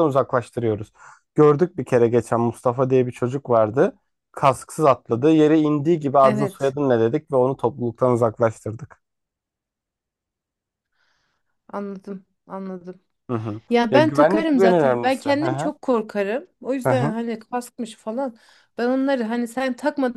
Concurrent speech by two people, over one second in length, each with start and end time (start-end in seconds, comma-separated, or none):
13.7-15.7